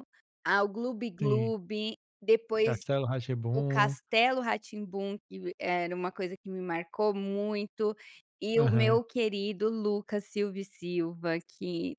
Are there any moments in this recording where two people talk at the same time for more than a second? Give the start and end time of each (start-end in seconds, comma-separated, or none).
none